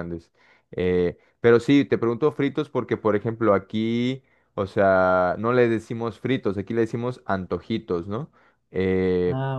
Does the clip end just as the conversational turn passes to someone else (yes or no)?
no